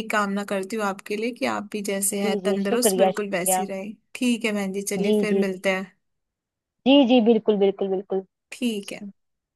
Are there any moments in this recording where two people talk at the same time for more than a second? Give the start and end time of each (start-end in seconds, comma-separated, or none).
2.2-3.6